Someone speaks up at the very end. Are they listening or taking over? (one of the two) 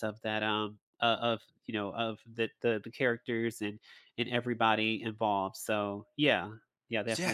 taking over